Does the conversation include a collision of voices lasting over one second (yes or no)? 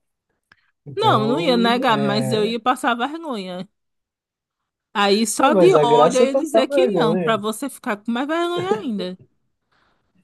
yes